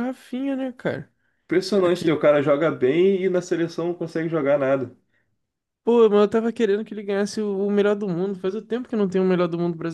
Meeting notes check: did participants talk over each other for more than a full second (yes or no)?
no